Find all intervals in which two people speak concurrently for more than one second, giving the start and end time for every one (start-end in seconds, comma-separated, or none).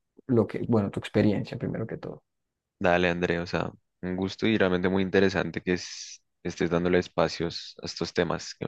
none